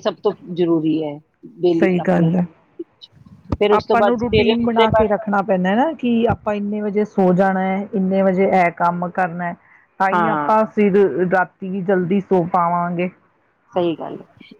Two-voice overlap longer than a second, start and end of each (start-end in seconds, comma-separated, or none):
3.8-5.1